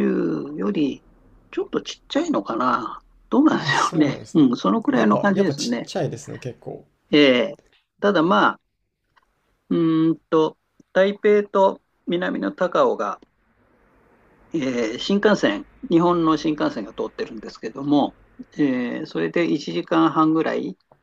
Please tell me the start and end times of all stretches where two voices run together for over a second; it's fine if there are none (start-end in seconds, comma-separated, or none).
3.5-5.9